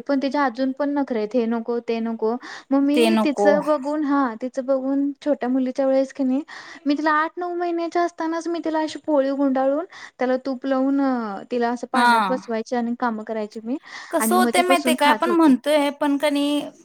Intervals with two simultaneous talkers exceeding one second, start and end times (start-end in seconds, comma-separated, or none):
14.2-15.5